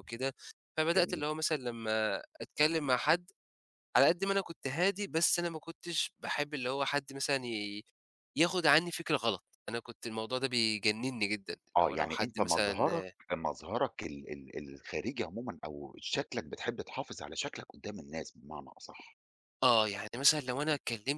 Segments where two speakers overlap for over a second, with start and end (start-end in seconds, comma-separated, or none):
11.8-13.1